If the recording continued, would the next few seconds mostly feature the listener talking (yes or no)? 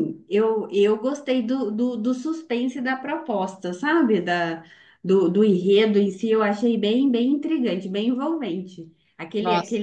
no